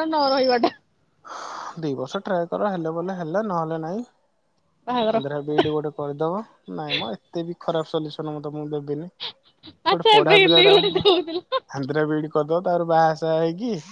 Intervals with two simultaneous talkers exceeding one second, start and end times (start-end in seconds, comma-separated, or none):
9.9-11.4